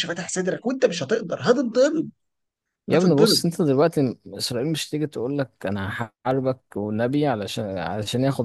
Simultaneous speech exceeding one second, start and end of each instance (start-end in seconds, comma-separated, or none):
none